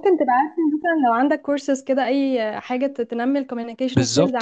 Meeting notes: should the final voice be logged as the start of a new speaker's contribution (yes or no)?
no